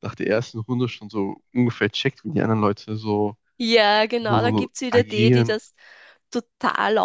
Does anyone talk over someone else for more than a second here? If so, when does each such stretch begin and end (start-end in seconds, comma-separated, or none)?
4.2-5.6